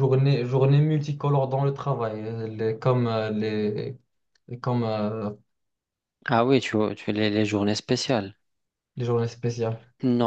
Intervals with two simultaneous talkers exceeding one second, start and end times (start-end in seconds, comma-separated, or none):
none